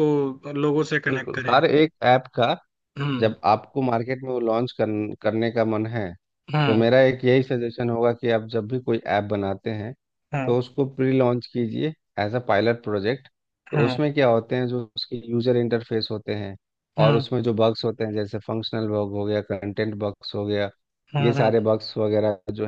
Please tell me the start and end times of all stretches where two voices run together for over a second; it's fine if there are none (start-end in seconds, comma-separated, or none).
none